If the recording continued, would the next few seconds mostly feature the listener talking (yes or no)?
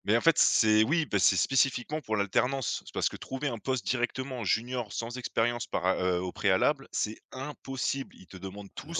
no